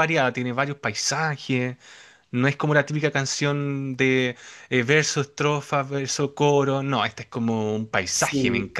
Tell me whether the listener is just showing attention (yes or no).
no